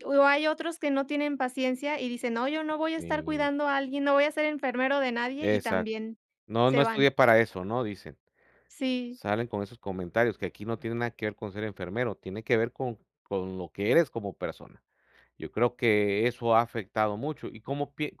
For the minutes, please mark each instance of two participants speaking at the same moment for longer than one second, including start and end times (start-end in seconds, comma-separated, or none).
none